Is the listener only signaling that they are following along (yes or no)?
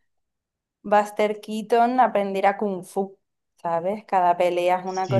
no